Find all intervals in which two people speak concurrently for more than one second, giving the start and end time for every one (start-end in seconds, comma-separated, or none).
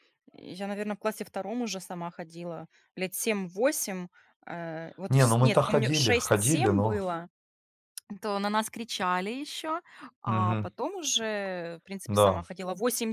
5.1-7.0